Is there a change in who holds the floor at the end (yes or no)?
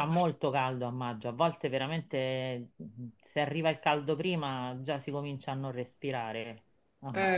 yes